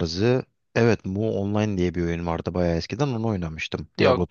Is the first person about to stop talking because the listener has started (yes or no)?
yes